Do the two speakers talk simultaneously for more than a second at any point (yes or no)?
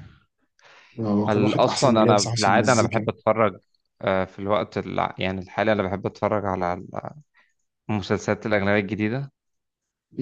yes